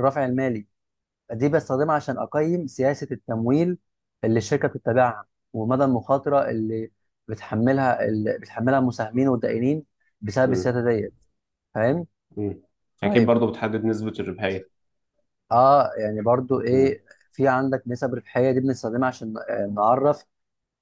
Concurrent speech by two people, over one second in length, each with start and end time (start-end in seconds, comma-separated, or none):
none